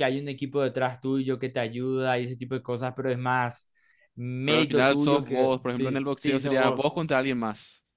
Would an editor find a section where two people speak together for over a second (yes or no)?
yes